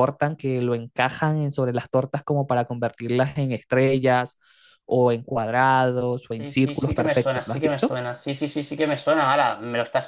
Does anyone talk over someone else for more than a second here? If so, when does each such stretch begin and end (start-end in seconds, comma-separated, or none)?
6.4-8.0